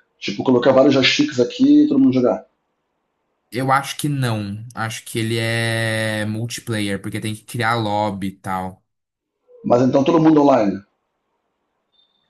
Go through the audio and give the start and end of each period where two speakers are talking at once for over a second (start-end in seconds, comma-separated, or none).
none